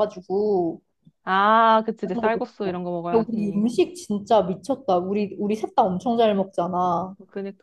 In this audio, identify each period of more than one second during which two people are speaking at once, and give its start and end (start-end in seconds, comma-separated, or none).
2.0-3.6